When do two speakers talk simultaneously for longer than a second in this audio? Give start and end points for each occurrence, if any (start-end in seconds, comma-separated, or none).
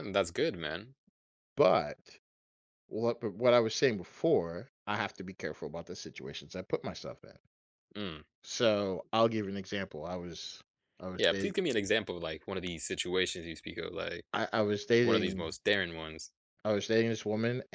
none